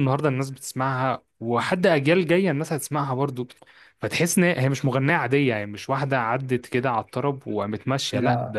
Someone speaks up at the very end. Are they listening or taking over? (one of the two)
listening